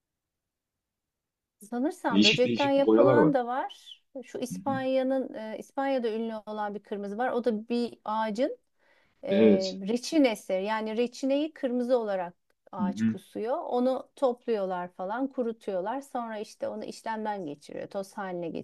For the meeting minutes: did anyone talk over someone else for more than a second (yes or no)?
yes